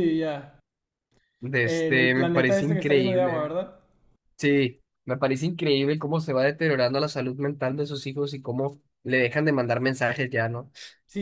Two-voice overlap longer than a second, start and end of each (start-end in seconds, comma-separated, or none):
1.6-3.5